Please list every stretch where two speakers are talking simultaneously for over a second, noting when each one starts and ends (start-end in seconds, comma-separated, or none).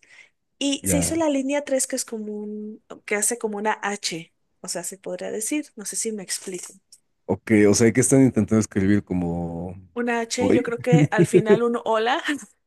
none